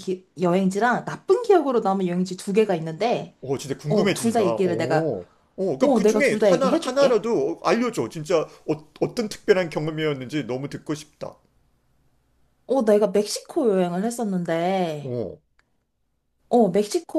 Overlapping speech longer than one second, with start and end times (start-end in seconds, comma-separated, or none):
3.9-5.1, 5.8-7.2